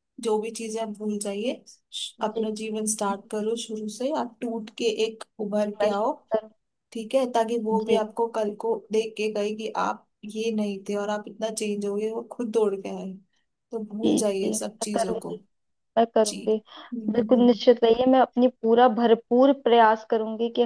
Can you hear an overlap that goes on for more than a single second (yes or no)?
yes